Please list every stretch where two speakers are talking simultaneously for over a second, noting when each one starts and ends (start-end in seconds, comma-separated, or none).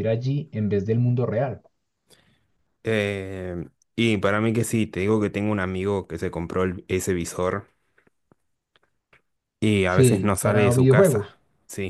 9.8-11.4